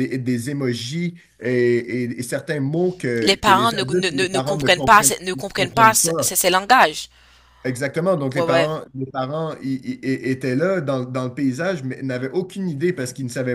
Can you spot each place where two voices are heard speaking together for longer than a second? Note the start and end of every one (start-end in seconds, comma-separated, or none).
3.2-6.3